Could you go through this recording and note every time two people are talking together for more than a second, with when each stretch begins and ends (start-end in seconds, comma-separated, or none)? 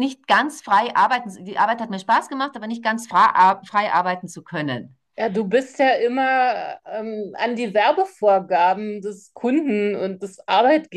none